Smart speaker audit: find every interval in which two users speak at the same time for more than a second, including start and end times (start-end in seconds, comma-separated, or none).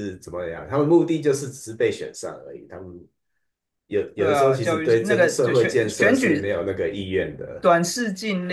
4.2-6.5